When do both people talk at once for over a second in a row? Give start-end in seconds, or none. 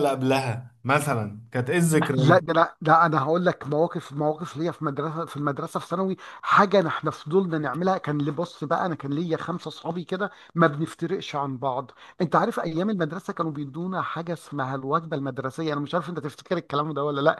none